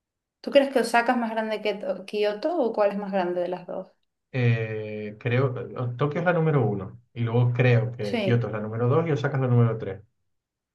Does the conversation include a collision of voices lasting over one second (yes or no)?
no